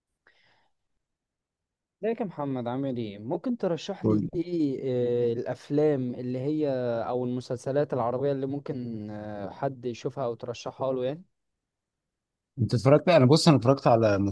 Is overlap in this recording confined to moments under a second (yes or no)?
yes